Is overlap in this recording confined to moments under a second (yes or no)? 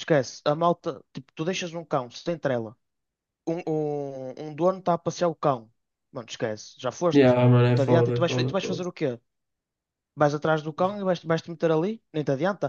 no